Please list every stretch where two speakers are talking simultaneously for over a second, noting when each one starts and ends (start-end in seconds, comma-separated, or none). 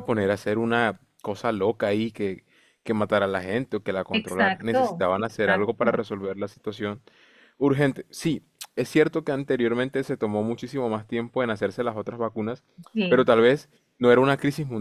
4.1-6.0